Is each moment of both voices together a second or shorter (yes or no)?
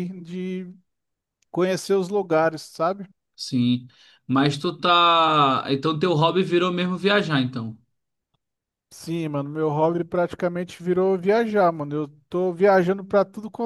yes